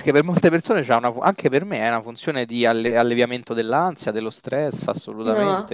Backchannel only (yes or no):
no